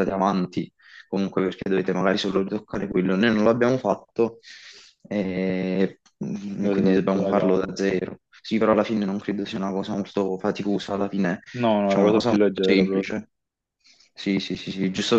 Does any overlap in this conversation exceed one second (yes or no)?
yes